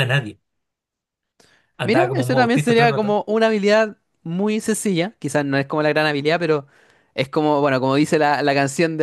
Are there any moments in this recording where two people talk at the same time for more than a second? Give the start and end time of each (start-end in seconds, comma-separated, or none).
1.8-3.2